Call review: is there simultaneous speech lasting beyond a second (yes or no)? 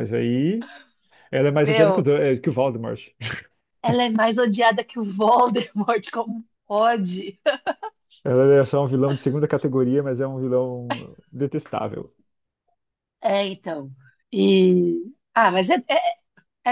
no